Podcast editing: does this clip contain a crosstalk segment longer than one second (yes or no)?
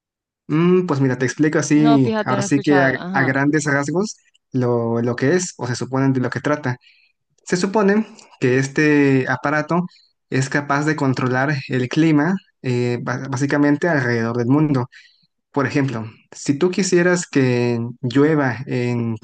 yes